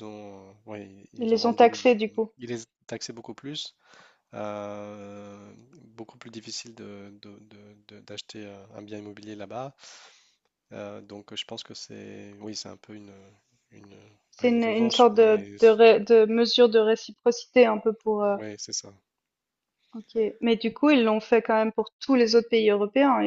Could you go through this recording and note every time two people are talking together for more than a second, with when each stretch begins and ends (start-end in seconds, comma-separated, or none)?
14.4-15.6